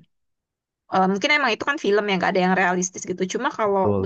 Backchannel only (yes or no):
yes